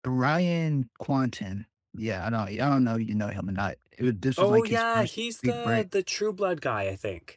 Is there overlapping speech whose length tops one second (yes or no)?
yes